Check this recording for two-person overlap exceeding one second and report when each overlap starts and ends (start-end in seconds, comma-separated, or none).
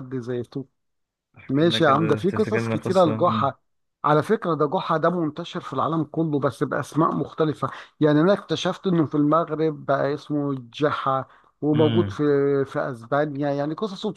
1.5-3.5